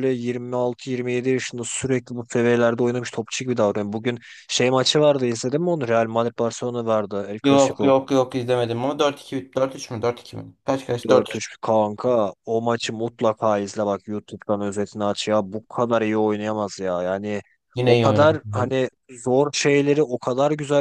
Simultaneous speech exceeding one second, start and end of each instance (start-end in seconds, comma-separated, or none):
none